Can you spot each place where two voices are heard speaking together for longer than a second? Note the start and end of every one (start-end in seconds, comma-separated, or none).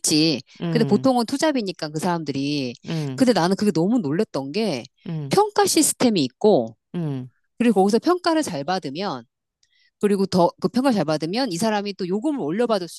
none